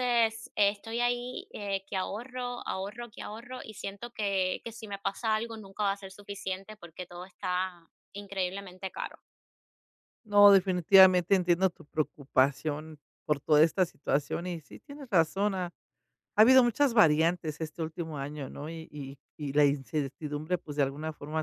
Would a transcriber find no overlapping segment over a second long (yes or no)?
yes